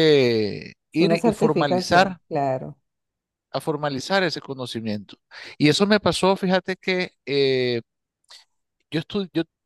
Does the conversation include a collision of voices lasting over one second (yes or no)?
yes